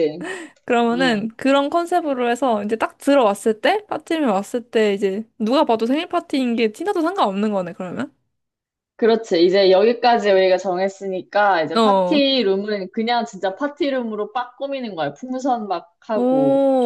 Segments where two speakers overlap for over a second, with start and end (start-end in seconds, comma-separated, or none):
none